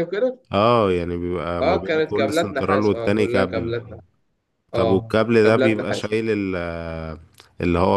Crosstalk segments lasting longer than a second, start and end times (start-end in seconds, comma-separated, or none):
1.6-3.7, 4.7-6.1